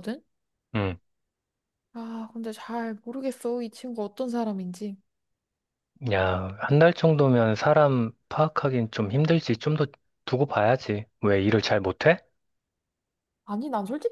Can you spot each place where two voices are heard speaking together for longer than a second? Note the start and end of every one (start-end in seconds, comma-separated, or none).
none